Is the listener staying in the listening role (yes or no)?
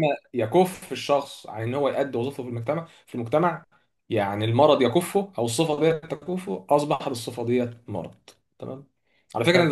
yes